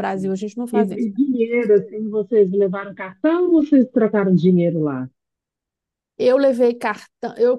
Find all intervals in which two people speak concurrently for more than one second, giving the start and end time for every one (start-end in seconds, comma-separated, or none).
none